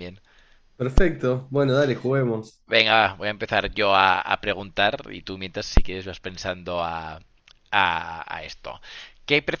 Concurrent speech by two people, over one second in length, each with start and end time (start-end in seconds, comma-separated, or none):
none